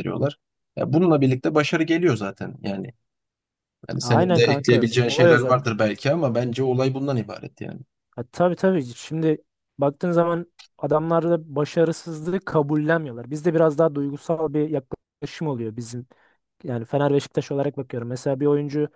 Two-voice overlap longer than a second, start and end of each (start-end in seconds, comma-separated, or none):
4.0-5.7